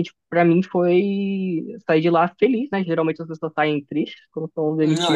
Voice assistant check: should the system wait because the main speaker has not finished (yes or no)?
no